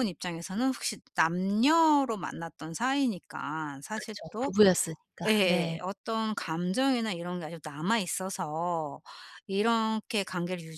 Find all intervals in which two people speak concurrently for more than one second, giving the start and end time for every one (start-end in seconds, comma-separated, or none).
none